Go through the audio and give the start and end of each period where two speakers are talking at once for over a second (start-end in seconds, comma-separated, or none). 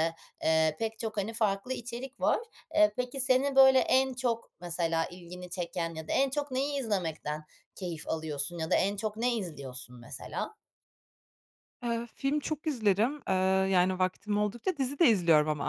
none